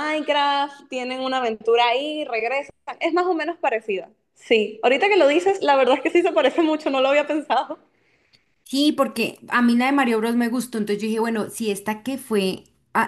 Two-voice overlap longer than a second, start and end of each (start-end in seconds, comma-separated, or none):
none